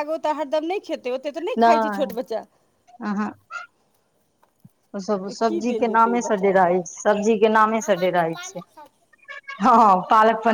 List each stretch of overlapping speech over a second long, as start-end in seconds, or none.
5.1-6.8